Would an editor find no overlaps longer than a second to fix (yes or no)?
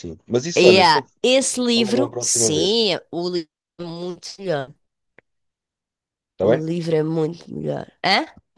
no